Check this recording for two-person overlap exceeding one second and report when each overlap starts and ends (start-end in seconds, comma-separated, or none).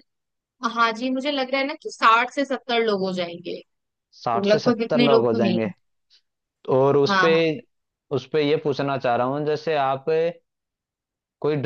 4.2-5.6